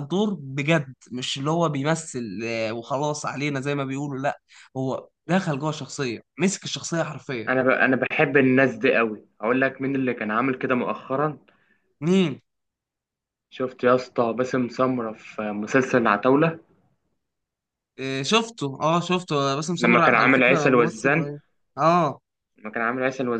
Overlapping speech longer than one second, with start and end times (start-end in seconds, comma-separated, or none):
19.8-21.3